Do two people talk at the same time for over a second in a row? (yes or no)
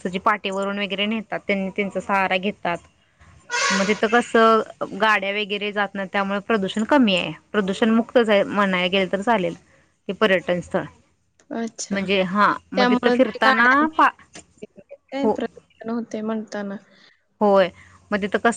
no